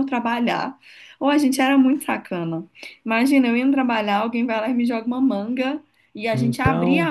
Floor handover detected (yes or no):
no